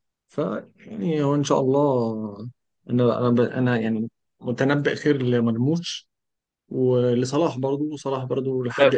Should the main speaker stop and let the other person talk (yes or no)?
yes